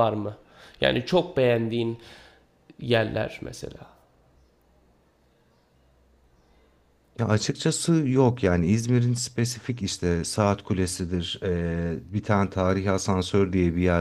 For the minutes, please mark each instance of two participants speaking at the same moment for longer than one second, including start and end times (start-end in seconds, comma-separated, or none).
none